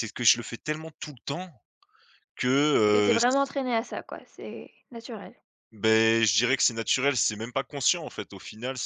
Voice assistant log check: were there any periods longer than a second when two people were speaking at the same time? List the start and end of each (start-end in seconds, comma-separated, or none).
none